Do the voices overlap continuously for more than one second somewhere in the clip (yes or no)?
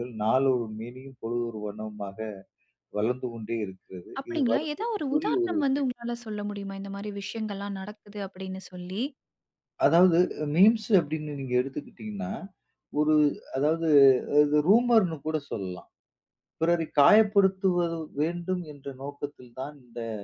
yes